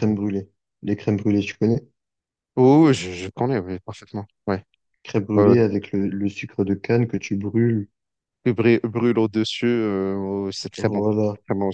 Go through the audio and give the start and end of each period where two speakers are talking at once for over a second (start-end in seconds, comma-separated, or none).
none